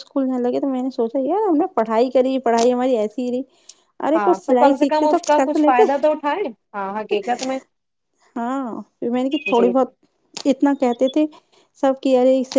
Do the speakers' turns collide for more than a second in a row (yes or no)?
yes